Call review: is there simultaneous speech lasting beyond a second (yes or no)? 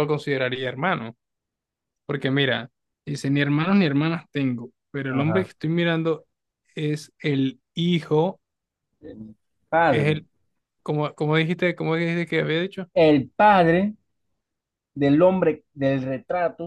no